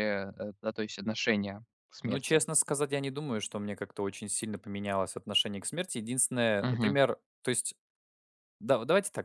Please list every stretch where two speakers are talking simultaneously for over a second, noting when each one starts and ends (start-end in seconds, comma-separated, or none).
none